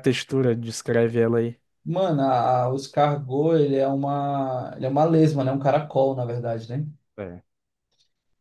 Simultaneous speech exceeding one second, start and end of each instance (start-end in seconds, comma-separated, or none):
none